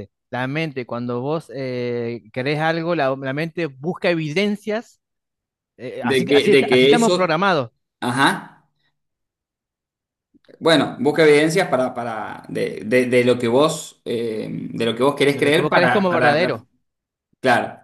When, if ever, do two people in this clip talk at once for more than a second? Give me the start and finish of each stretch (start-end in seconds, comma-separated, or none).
6.0-7.4, 15.3-16.6